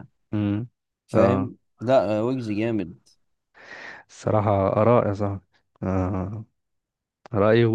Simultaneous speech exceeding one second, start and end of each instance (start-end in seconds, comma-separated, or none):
none